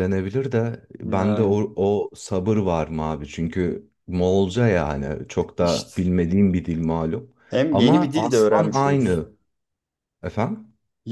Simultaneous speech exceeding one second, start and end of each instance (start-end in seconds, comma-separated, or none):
7.7-9.3